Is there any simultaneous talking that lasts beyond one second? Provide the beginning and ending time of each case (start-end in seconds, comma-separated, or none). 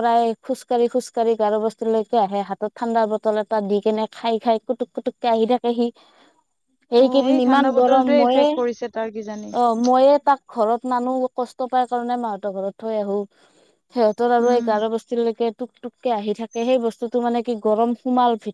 7.0-8.5